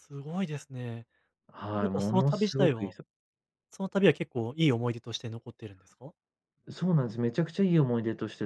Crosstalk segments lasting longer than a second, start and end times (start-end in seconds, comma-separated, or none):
1.7-2.9